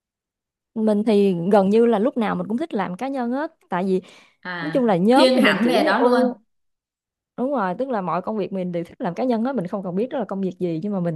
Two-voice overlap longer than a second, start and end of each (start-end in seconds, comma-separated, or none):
4.6-6.2